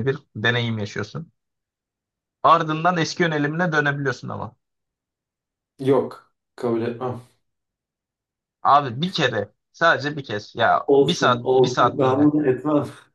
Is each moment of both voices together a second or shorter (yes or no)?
no